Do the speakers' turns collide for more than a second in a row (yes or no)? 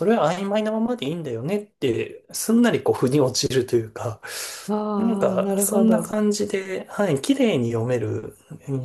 yes